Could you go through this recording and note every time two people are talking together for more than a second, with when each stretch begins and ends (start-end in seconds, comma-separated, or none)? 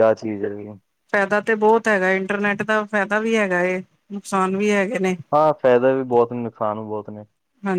none